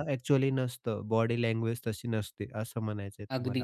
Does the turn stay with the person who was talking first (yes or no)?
no